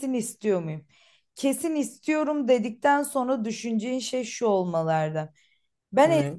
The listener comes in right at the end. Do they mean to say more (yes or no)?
no